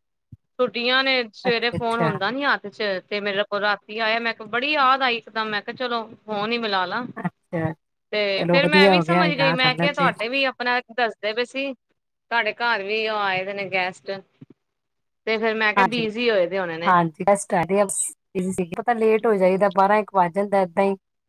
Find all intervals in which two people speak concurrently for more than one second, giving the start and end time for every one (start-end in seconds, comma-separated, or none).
8.2-10.2